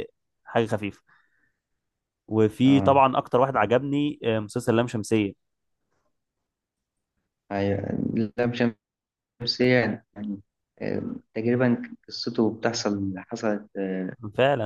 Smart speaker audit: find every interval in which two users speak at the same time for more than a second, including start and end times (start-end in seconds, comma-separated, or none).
none